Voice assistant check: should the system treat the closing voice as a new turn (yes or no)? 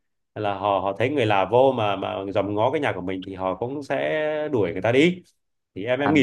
yes